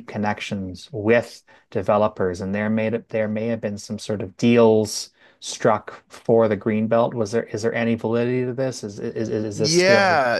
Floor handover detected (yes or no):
yes